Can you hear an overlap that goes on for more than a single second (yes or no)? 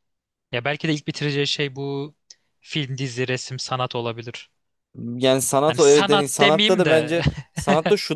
yes